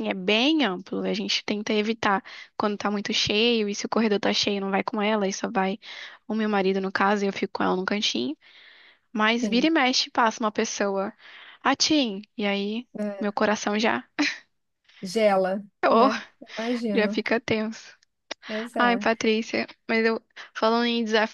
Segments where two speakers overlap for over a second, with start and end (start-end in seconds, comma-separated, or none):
none